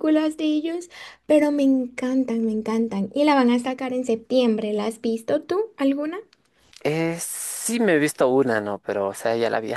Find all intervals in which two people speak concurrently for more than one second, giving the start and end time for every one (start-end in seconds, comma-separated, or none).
none